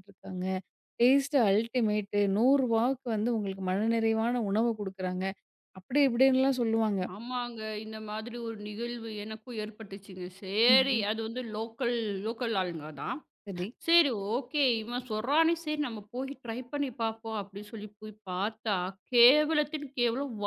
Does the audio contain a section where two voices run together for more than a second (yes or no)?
no